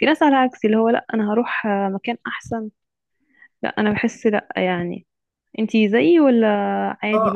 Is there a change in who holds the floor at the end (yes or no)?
yes